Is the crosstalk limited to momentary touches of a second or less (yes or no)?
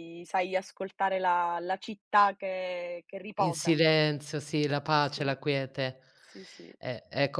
yes